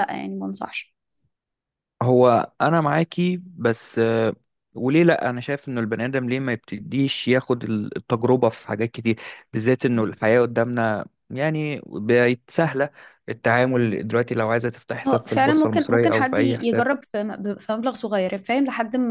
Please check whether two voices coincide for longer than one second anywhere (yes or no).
yes